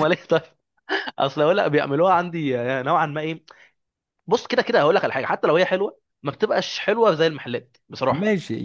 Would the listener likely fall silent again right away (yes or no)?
no